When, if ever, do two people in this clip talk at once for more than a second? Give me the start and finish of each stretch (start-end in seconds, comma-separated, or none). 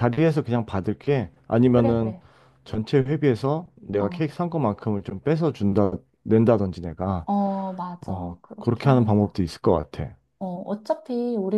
8.1-9.3